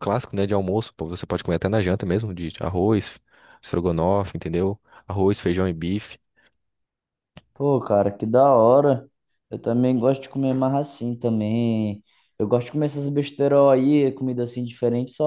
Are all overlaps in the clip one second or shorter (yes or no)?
yes